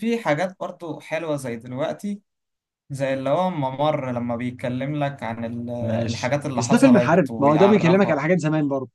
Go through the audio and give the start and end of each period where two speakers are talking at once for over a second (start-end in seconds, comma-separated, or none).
6.1-8.2